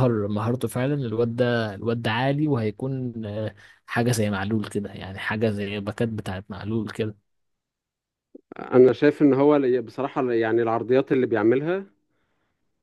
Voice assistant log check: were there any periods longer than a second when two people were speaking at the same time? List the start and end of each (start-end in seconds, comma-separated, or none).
none